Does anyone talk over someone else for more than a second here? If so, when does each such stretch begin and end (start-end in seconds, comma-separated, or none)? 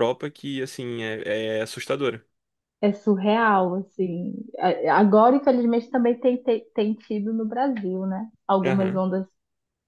none